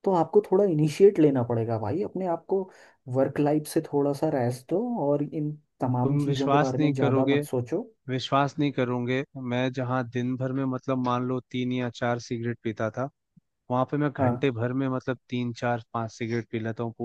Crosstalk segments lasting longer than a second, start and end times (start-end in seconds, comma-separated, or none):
6.0-7.4